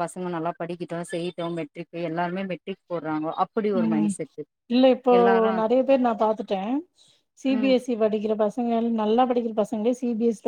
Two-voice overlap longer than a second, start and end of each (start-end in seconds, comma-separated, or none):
none